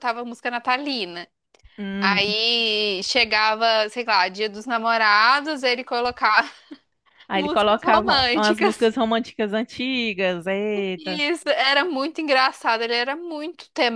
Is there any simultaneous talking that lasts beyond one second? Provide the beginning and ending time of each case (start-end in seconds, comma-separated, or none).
7.3-8.9